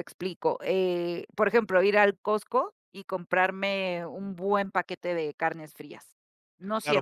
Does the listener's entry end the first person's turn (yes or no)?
yes